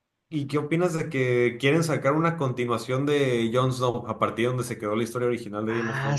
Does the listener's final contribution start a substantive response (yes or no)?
yes